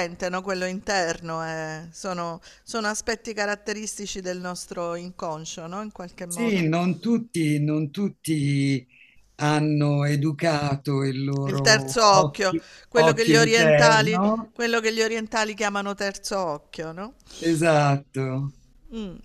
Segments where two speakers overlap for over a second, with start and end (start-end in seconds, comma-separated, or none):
11.4-14.5